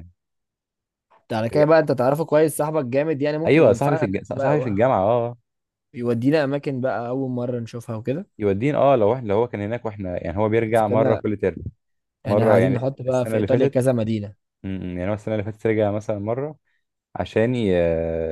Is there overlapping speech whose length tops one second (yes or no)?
yes